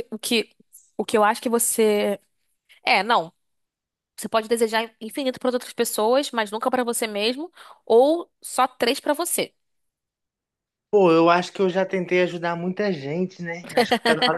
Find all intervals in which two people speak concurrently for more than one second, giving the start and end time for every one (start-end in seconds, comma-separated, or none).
none